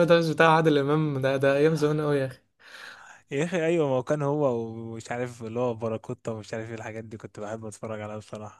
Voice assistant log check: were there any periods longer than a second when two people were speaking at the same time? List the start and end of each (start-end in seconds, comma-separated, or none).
none